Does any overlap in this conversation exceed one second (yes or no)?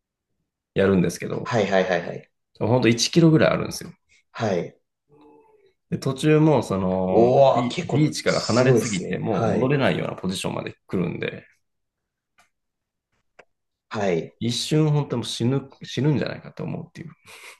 yes